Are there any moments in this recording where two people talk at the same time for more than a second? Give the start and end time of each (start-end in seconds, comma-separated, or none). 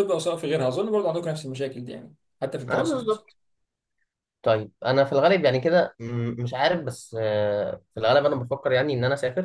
none